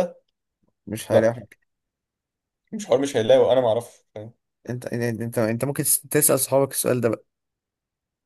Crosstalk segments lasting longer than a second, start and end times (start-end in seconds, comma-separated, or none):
none